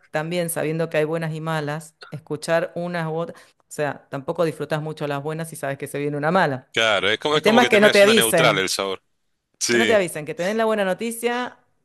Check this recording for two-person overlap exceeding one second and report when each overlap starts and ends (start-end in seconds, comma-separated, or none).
7.3-8.7